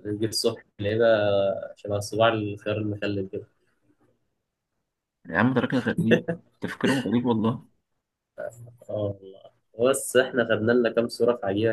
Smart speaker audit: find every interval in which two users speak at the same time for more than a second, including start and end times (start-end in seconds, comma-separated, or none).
none